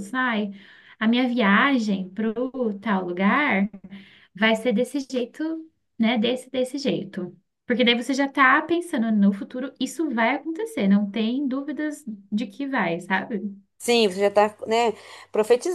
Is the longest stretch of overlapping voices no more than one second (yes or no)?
yes